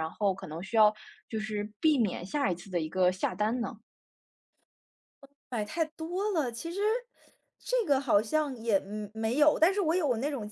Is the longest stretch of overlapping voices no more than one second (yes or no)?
yes